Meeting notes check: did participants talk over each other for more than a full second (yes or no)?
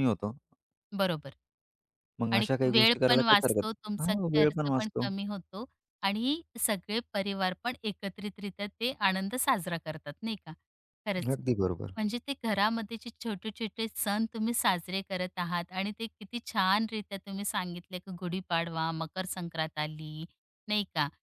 yes